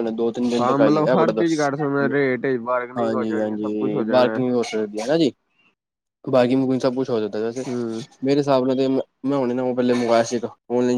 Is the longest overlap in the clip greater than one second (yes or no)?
yes